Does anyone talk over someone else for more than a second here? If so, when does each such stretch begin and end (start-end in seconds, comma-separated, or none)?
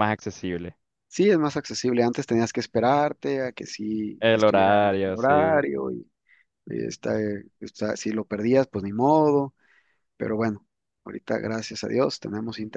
4.2-5.7